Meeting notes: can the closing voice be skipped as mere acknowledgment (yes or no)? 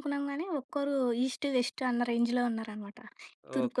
no